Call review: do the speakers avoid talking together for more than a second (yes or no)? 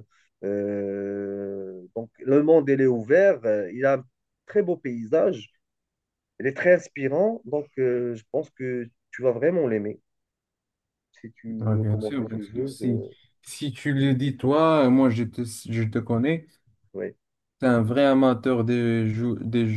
no